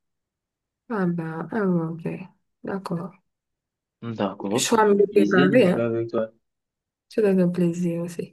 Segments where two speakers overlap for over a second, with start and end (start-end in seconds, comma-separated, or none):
4.5-5.9